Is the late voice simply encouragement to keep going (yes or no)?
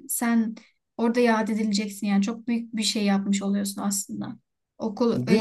no